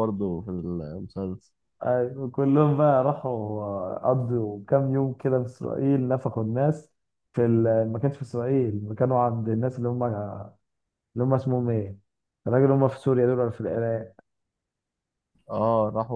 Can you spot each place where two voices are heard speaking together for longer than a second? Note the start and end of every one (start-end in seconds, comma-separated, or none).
none